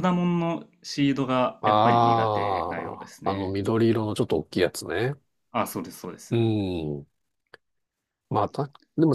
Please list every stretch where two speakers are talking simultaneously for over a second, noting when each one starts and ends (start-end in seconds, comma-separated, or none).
1.6-3.6